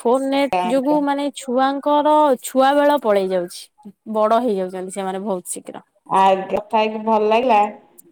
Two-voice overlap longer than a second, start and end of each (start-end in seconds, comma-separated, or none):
none